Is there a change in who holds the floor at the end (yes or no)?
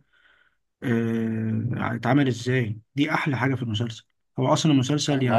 no